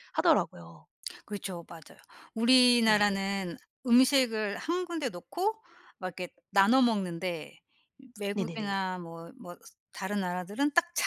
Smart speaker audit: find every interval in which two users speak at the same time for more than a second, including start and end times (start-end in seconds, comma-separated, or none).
none